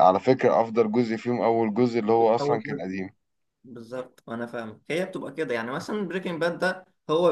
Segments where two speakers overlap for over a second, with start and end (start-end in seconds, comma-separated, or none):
none